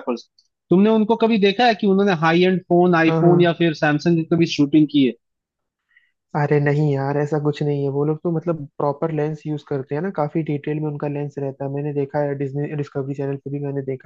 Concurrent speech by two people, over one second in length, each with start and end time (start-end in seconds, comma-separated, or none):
none